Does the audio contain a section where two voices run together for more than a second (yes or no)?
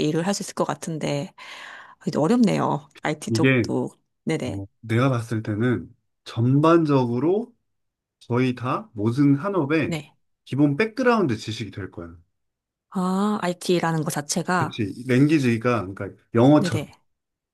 no